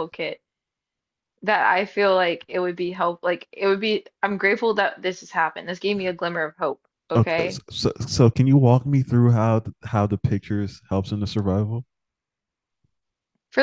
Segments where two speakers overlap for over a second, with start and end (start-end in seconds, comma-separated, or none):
none